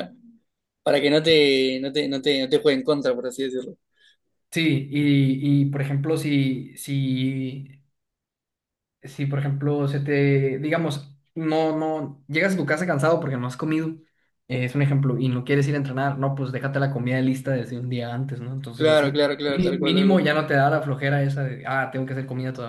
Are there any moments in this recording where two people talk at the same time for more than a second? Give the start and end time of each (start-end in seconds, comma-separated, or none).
18.8-20.2